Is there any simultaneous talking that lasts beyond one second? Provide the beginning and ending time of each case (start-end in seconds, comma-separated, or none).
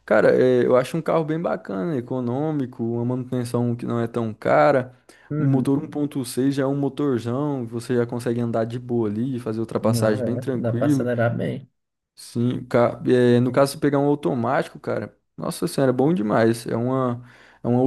9.8-11.1